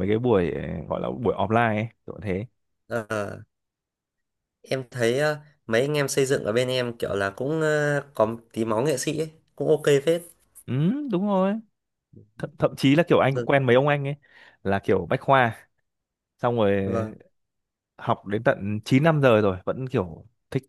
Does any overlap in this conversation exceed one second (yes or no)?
no